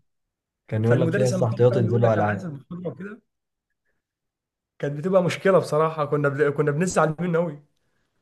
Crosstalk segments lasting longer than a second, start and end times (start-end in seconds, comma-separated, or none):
0.8-2.5